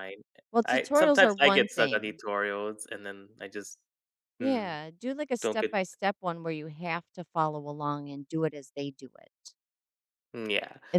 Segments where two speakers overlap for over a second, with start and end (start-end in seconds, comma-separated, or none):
0.7-2.2